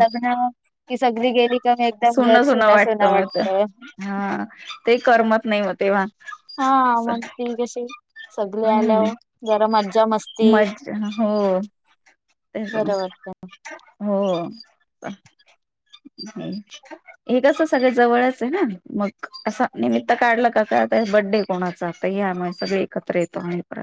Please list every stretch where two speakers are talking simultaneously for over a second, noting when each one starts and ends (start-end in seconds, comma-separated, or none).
none